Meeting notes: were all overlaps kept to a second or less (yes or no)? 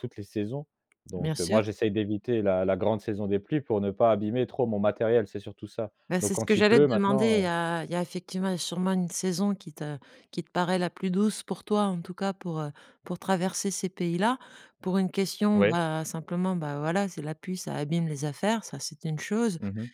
no